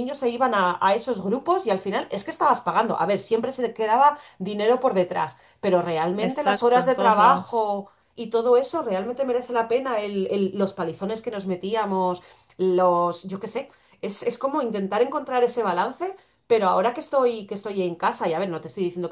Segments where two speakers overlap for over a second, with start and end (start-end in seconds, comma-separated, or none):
6.2-7.7